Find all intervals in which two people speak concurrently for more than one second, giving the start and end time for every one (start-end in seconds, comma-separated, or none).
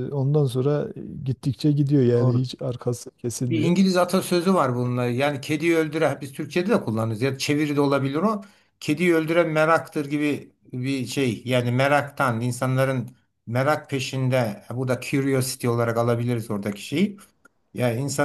none